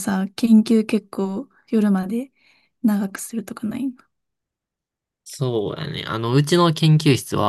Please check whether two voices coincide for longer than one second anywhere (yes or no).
no